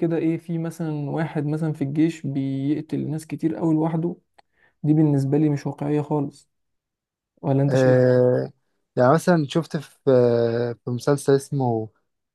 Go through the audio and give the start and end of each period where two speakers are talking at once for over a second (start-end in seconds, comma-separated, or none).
none